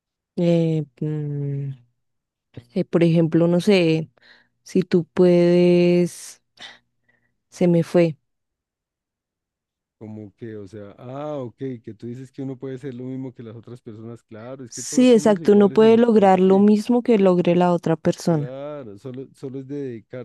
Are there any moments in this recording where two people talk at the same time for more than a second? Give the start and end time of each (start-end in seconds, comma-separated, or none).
14.7-16.7